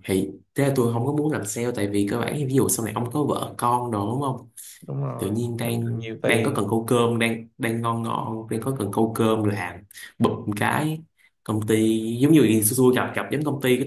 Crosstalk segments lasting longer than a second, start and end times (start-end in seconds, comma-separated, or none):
5.2-6.7